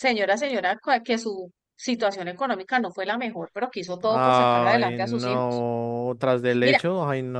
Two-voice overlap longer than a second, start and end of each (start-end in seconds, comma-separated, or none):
4.0-5.7